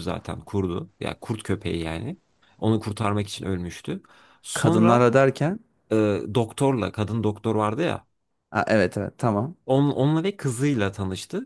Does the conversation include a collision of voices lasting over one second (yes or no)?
no